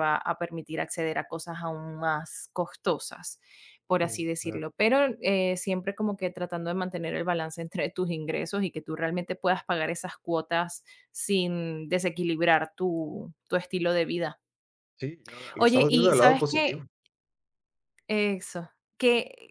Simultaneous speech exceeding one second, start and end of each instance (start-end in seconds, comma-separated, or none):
15.6-16.8